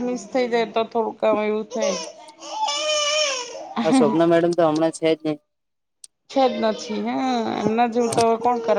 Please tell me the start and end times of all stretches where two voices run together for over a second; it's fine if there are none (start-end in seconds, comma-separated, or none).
none